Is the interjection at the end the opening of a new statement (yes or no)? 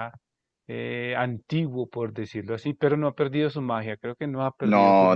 yes